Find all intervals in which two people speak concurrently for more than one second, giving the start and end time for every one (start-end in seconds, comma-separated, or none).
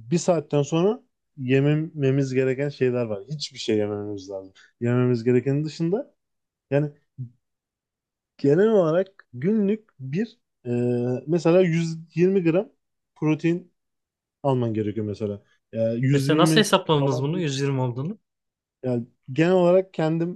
16.1-17.5